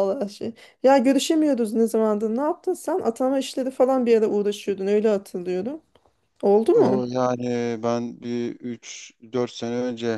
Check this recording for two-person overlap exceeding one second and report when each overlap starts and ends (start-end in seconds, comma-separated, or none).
none